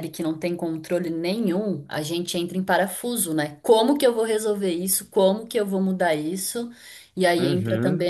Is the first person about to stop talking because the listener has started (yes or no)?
no